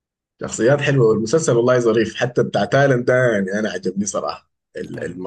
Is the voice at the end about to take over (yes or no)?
no